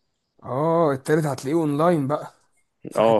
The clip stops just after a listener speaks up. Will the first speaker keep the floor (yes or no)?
no